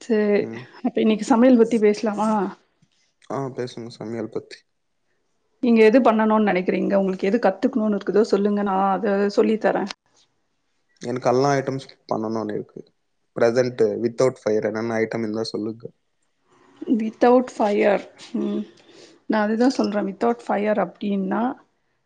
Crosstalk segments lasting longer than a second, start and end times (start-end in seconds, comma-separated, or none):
none